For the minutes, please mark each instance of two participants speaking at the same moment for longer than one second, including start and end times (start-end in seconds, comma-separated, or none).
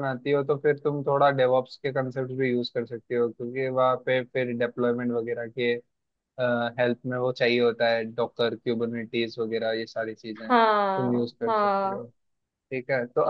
10.5-12.0